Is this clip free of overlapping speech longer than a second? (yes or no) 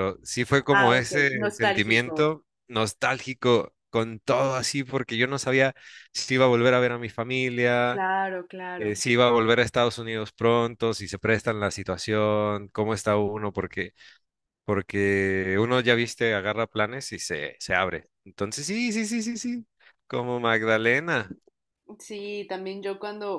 no